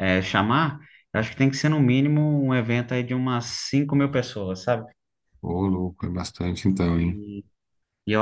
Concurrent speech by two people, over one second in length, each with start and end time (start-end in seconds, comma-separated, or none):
none